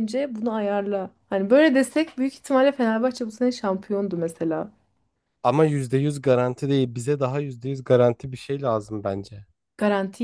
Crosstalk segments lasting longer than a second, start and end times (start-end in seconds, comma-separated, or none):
none